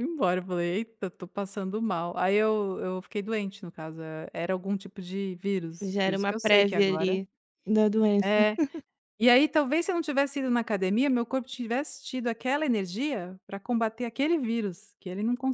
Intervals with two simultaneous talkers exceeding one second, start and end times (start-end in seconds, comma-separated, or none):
5.8-7.2